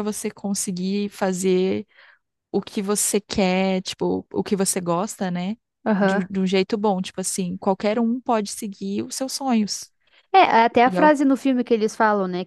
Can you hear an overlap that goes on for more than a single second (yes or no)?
no